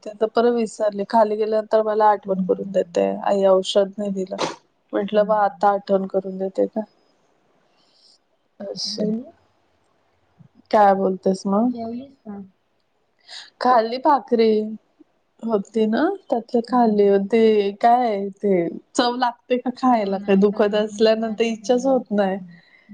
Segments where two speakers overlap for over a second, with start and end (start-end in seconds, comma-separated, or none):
19.9-22.4